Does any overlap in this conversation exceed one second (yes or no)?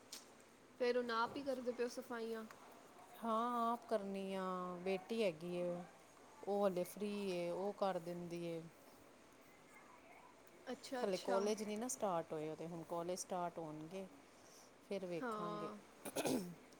no